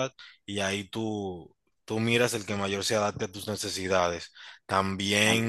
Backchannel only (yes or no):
yes